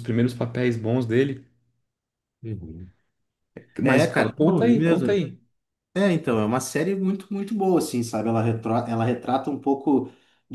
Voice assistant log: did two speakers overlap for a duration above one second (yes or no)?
yes